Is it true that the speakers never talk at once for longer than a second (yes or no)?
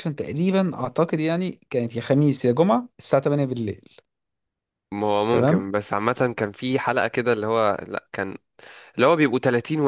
yes